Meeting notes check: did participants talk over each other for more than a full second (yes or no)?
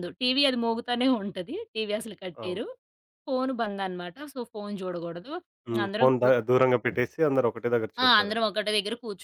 no